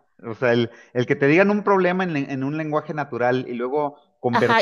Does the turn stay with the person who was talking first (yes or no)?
no